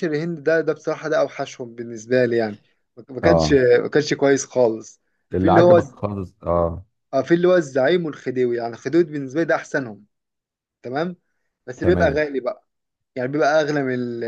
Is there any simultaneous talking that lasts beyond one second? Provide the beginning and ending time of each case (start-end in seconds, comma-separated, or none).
none